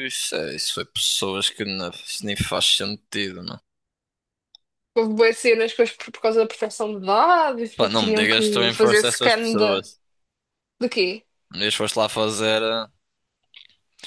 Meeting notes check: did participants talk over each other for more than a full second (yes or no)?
yes